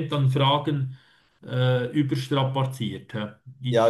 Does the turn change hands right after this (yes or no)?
yes